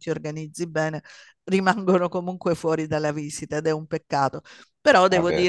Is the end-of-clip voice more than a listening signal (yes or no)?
no